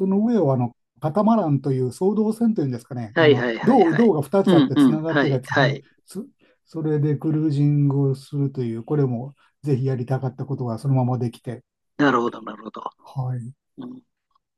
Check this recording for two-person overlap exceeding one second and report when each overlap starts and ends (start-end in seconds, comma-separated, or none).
3.1-5.8